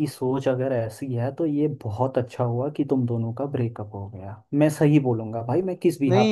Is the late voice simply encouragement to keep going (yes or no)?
no